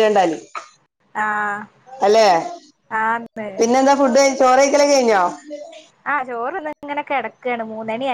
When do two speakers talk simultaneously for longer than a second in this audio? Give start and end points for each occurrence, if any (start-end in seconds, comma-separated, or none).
none